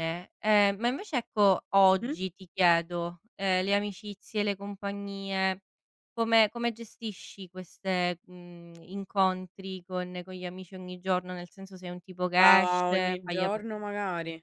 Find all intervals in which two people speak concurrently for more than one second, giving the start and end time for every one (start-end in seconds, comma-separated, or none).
12.4-13.7